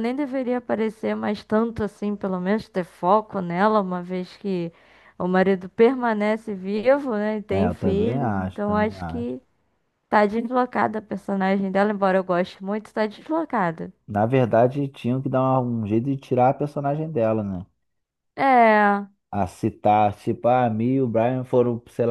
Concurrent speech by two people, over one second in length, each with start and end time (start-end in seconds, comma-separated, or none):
7.5-9.3